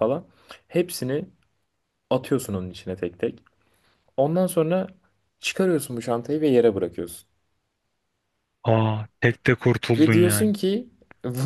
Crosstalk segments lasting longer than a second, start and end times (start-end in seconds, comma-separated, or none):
none